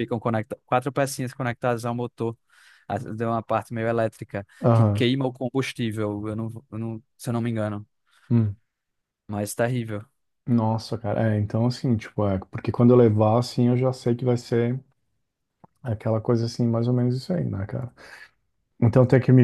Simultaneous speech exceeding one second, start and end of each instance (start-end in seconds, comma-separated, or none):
none